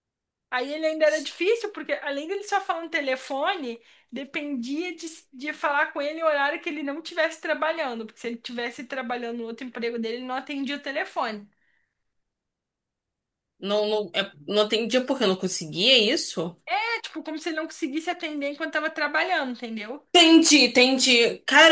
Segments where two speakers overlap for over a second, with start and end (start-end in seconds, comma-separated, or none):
none